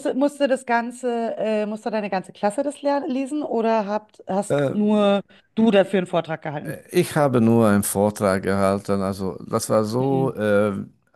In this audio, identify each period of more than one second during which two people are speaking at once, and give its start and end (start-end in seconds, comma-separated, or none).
none